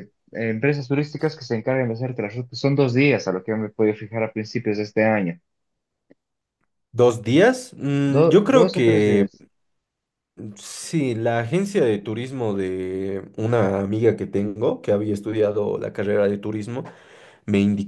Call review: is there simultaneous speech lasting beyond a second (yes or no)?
yes